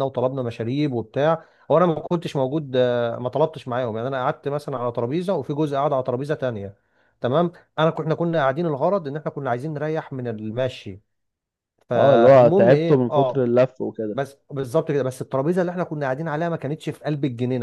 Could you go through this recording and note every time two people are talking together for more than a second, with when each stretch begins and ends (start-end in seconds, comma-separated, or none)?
11.9-13.5